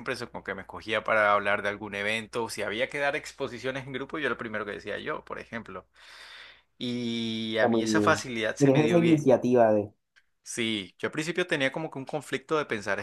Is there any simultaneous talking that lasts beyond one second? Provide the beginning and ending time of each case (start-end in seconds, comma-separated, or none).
7.5-9.2